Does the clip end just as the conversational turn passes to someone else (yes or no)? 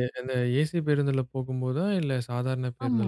yes